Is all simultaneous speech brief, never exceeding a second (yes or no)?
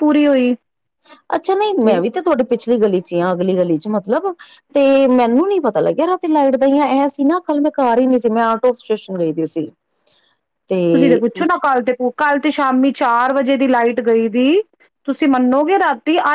yes